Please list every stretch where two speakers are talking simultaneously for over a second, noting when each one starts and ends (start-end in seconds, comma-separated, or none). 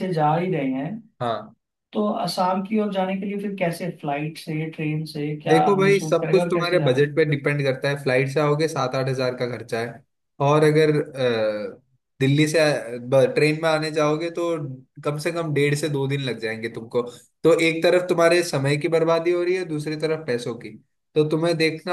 5.5-7.1